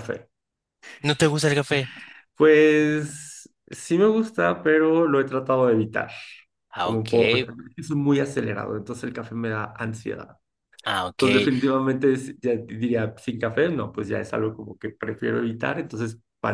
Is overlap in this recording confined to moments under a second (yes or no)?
yes